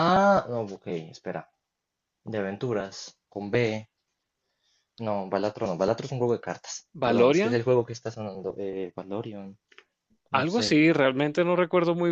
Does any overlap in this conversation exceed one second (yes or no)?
no